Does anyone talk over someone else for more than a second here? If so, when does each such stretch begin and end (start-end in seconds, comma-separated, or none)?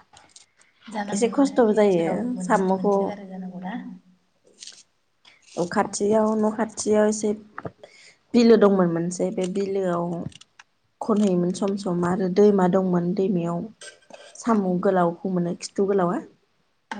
1.1-2.9